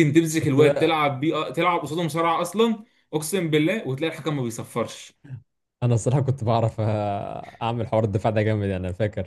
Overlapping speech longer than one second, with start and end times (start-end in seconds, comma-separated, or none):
none